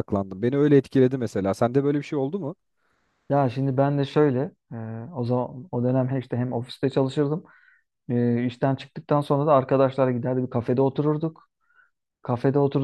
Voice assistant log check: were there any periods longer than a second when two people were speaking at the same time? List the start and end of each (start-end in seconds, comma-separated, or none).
none